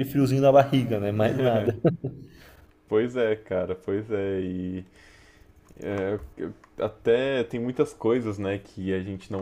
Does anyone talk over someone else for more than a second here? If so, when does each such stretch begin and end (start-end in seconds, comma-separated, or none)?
none